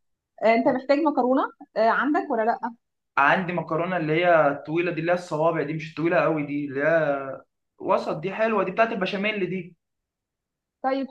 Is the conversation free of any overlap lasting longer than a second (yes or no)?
yes